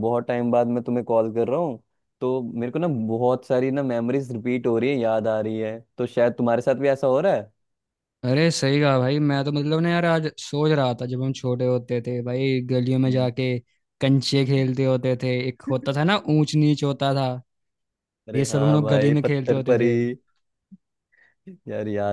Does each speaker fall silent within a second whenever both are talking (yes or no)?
no